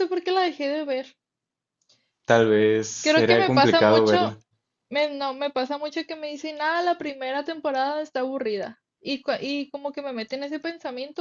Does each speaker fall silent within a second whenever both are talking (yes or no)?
no